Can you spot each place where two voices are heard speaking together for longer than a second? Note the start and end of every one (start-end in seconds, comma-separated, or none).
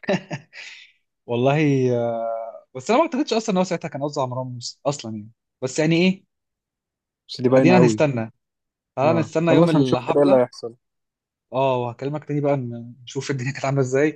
9.0-10.4